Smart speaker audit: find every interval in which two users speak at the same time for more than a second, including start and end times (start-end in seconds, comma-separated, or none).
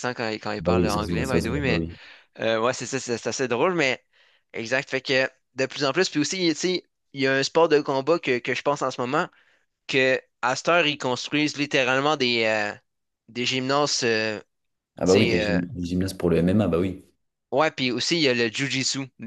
0.6-1.9